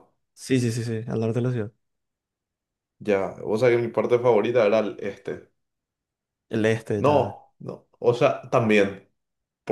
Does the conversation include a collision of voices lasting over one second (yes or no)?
no